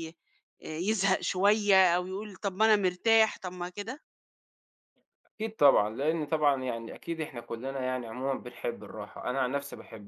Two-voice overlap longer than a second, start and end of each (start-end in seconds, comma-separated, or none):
none